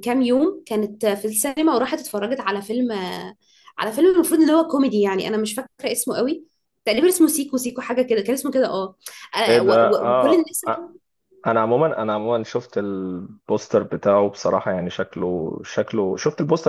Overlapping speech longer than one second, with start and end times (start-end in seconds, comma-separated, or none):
9.5-10.9